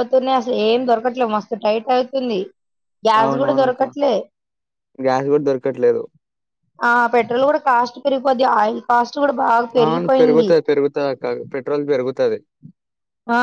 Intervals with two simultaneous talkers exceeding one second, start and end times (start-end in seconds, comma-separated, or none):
none